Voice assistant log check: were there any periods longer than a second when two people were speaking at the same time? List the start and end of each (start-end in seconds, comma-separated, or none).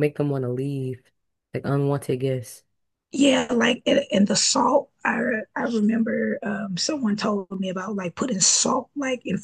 none